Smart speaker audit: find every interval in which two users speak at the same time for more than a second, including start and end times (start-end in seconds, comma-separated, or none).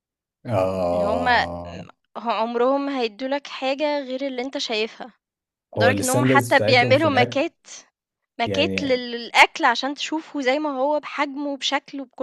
5.8-7.5